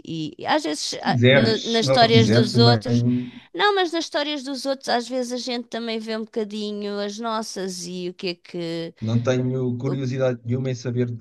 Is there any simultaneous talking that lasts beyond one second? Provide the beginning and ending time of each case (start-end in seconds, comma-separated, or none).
0.8-3.0